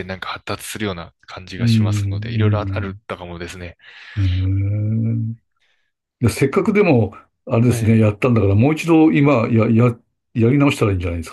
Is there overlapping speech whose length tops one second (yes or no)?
yes